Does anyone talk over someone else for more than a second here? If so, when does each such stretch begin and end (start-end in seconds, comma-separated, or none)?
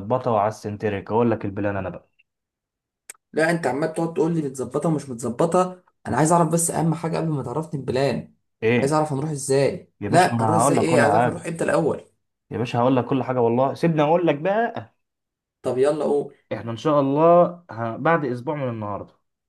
10.0-11.5